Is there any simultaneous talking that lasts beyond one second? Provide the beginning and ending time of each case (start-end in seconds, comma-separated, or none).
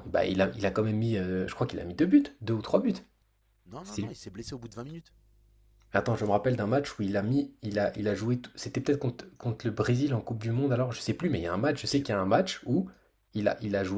none